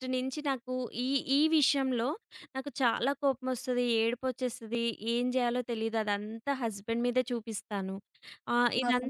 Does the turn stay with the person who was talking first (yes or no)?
yes